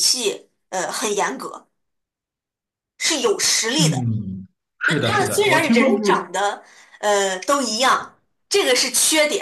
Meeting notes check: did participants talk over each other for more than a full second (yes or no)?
yes